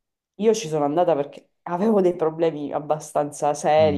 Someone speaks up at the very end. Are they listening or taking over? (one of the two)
taking over